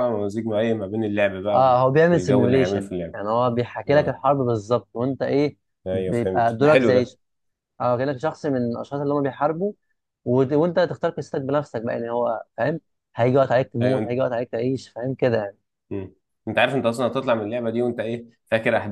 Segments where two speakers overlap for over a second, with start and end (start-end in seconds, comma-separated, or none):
1.5-3.2, 5.9-7.2